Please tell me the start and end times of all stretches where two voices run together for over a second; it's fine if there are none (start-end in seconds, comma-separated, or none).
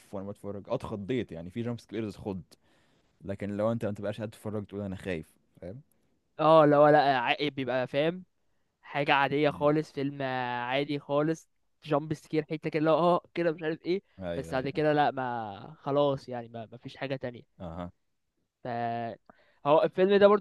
none